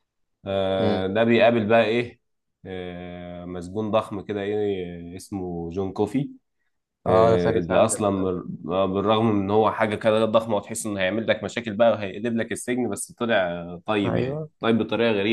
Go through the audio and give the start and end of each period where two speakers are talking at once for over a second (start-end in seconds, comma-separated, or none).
7.1-8.3